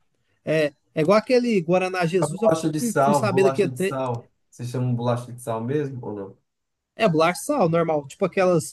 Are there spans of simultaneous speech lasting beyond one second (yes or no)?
yes